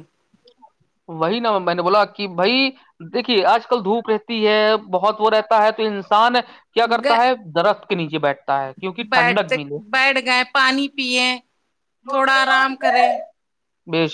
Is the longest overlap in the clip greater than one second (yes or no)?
no